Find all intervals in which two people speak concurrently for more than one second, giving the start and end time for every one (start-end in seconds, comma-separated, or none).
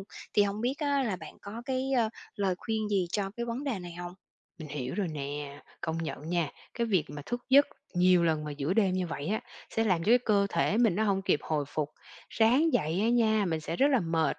none